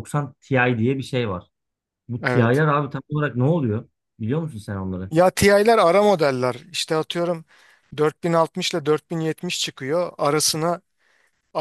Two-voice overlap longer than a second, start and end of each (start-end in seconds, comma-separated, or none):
none